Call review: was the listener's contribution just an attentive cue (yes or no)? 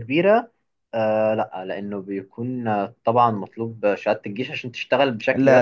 no